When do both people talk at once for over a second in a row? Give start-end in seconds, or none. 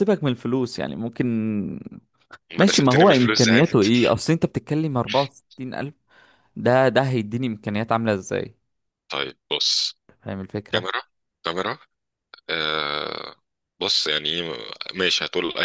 2.6-3.9